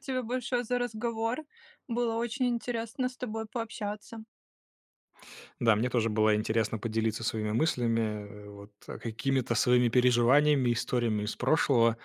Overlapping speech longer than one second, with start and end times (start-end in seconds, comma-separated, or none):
none